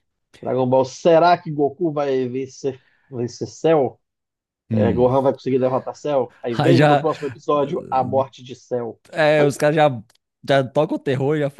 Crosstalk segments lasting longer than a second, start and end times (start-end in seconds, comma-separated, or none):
none